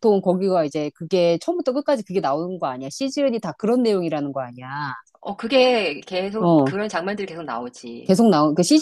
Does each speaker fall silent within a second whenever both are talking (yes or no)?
yes